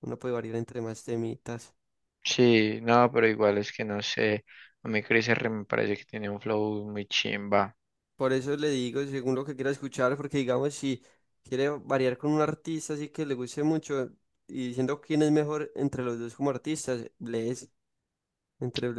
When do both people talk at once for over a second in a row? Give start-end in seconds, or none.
none